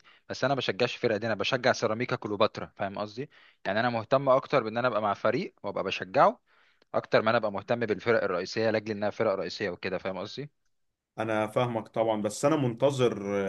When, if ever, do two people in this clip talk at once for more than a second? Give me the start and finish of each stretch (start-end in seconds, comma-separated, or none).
none